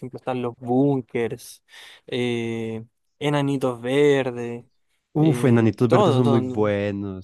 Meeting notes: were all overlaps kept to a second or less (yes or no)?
no